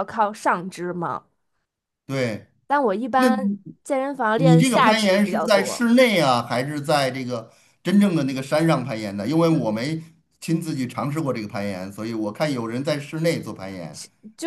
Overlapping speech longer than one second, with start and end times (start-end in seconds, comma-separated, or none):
4.3-5.9